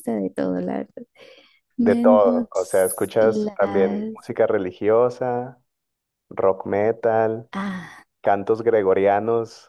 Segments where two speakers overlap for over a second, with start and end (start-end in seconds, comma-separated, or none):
1.8-4.1